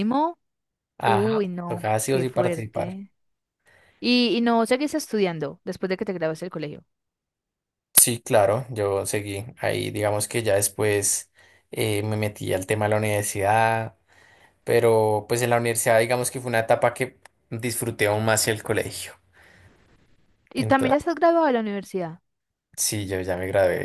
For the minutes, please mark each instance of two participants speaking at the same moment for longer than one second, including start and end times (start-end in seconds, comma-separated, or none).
1.0-3.0